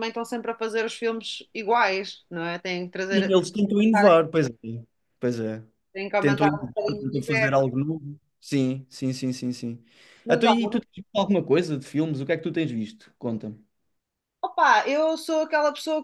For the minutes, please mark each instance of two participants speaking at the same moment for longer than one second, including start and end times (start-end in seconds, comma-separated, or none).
6.2-7.7